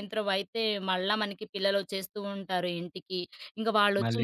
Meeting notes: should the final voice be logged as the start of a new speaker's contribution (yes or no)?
no